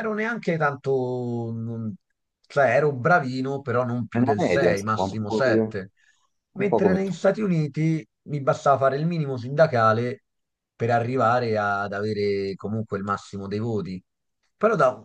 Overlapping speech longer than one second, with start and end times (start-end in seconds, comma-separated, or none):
4.1-5.7